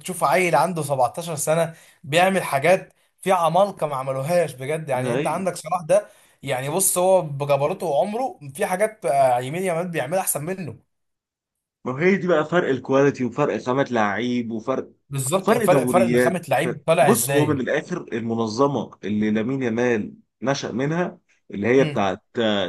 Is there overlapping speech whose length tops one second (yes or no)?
yes